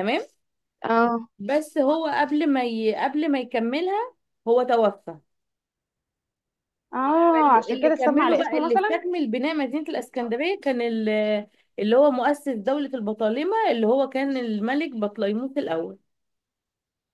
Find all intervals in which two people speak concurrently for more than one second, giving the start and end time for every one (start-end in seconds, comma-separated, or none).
7.3-9.0